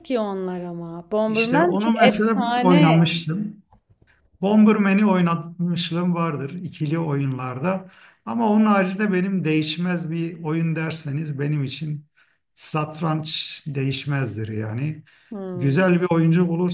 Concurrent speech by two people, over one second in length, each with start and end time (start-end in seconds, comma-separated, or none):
1.3-2.9